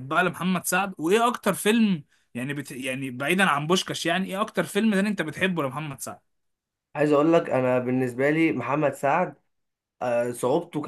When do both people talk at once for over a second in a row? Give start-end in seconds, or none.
none